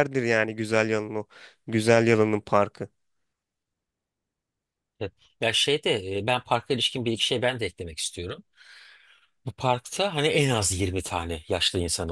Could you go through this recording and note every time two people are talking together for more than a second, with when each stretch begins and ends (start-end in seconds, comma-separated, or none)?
none